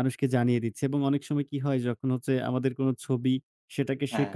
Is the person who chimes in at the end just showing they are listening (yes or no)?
yes